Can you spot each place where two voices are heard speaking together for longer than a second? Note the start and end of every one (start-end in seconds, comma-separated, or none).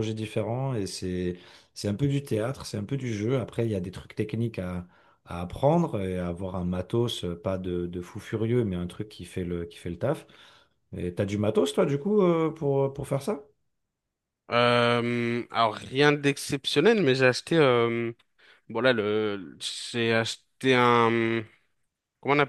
none